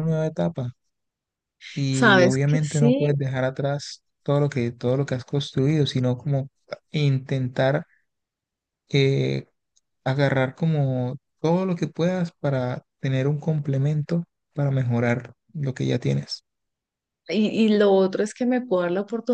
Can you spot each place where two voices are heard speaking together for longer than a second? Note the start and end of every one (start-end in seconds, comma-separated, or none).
1.9-3.1